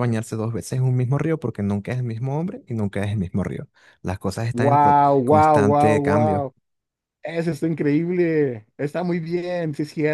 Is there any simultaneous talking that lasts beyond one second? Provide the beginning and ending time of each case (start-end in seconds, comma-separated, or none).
4.5-6.5